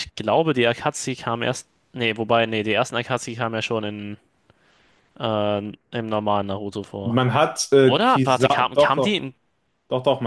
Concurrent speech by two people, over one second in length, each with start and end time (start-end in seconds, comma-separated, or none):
7.8-9.2